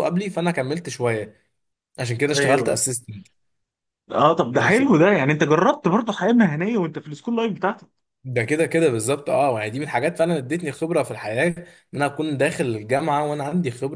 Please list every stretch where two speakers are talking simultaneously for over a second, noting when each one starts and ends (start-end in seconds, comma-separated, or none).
none